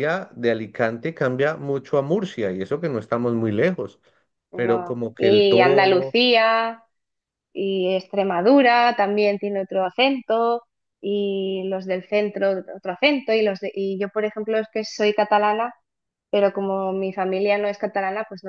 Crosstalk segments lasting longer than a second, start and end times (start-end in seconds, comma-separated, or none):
4.5-6.2